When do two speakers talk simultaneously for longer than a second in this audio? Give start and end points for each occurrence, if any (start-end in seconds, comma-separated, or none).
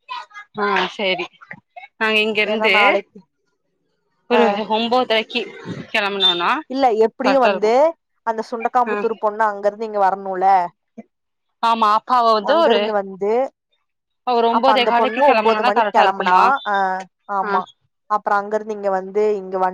14.6-16.4